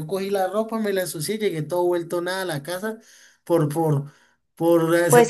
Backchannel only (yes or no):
no